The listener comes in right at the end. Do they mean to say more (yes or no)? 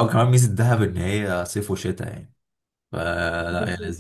no